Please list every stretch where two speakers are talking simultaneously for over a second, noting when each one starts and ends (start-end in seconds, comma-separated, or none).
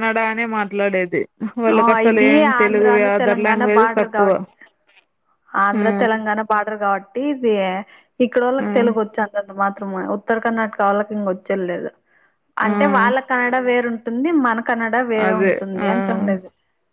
1.8-4.3